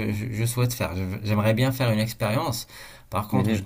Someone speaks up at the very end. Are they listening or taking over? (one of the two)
listening